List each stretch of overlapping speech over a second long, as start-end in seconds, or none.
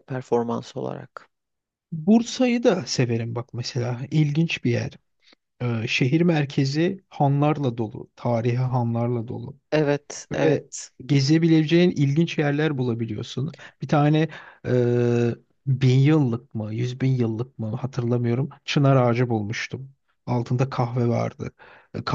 none